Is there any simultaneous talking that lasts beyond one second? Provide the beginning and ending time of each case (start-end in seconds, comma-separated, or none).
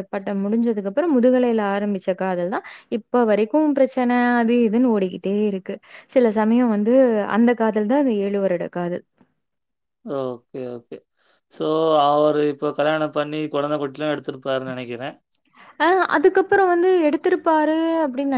none